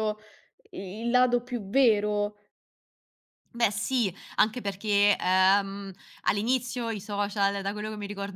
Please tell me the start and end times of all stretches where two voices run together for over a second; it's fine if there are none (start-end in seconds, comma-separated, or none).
none